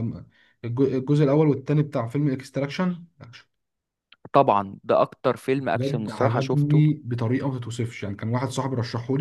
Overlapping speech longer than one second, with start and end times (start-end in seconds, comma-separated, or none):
5.6-6.8